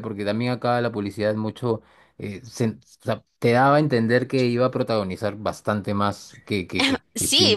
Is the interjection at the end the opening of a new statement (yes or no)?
yes